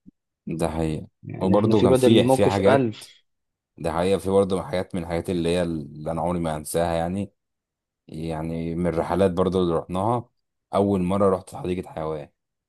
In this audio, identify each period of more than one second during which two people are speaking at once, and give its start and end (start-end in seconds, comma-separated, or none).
1.2-3.0